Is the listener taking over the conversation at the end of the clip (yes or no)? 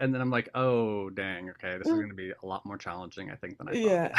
yes